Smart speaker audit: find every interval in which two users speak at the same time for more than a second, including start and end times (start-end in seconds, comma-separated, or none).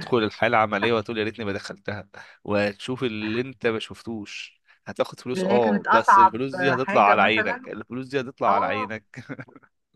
5.3-7.6